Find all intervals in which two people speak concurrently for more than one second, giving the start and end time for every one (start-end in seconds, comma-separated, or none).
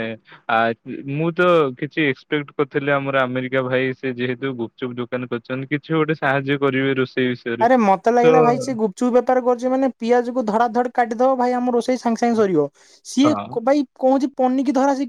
none